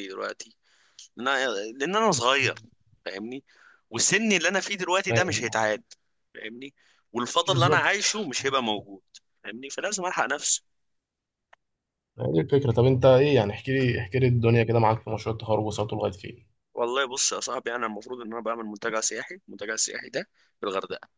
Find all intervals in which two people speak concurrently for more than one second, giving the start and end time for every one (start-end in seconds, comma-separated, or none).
none